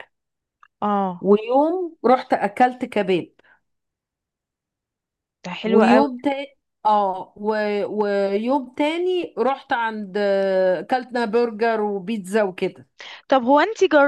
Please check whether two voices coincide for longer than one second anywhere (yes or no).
no